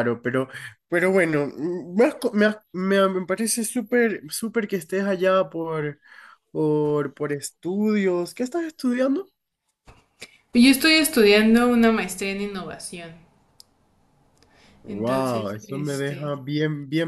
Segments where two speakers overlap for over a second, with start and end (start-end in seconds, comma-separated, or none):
14.9-16.3